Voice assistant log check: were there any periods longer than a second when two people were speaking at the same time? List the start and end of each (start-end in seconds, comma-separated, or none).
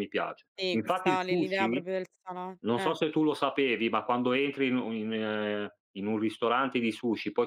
0.6-1.9